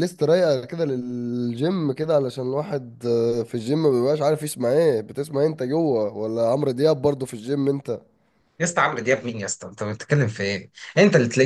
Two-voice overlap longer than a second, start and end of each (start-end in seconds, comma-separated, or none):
none